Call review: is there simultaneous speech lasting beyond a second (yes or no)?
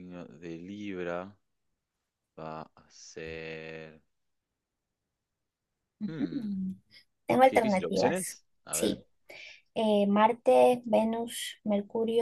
yes